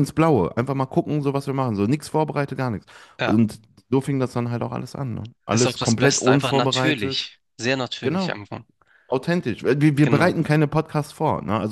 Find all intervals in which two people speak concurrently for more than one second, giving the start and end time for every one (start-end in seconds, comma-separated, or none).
5.5-7.3